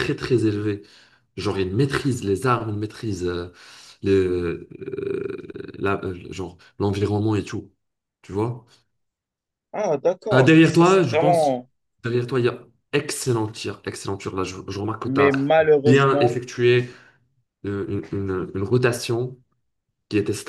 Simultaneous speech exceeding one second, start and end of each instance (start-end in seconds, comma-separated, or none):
10.3-11.6, 15.0-16.4